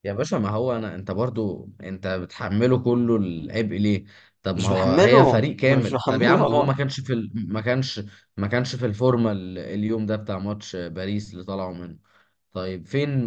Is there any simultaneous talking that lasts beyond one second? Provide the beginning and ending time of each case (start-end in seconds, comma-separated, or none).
4.5-6.7